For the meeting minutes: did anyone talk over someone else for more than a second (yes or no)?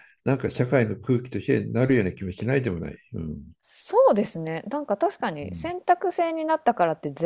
no